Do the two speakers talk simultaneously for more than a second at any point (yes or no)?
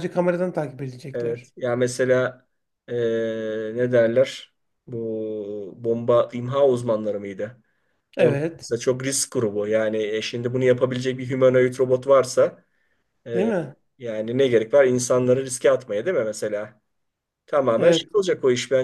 no